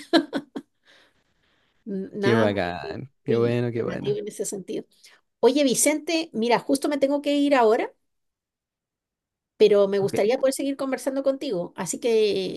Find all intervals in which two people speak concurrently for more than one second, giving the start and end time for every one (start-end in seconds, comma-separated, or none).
2.2-4.2